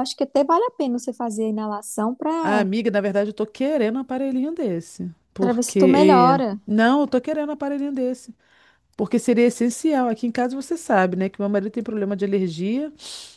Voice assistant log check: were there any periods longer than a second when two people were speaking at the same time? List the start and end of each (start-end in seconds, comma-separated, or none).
5.4-6.6